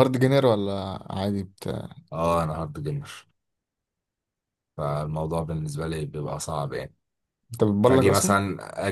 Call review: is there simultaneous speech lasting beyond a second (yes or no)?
no